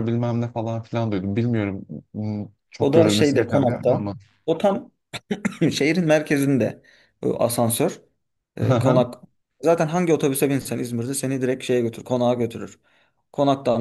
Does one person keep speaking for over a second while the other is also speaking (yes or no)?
yes